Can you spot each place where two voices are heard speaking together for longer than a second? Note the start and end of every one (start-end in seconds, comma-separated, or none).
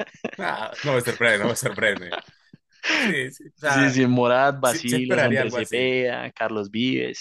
4.6-5.9